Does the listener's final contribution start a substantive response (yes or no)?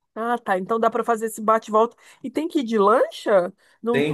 yes